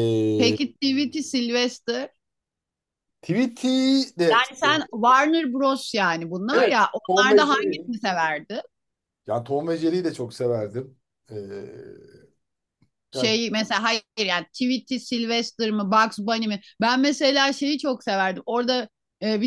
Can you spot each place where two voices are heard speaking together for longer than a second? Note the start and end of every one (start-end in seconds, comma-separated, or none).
6.5-7.9